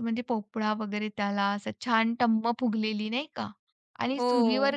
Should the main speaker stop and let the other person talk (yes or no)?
no